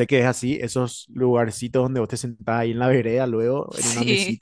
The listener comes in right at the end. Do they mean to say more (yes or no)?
no